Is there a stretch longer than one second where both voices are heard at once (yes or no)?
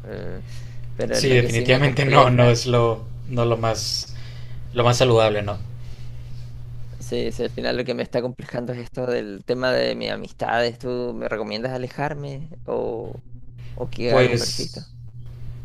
yes